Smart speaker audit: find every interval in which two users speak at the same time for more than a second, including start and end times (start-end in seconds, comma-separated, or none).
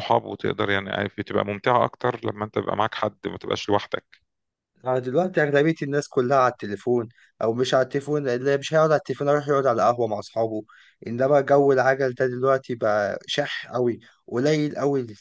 none